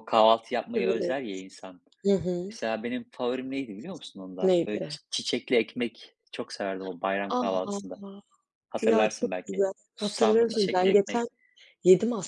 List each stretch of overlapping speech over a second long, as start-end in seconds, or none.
8.8-11.3